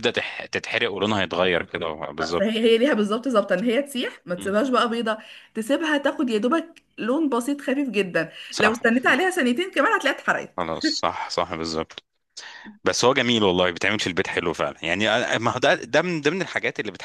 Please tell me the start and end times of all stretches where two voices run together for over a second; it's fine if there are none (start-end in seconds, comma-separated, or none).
none